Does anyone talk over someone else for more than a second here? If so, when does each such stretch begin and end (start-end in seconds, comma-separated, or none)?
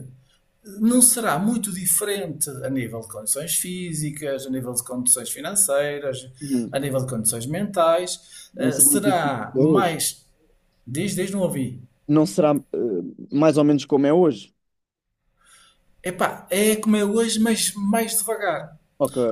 8.5-10.0